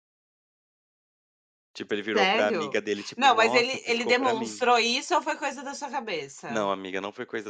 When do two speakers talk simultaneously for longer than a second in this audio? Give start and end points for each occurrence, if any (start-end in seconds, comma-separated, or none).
2.1-4.6